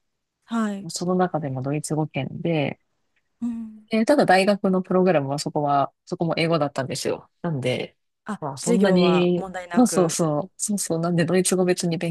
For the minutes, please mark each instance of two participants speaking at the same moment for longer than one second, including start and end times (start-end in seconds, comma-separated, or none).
8.4-10.2